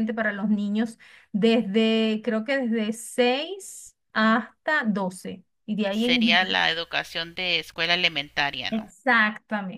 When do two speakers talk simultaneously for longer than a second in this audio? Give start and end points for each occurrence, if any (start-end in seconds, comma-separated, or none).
none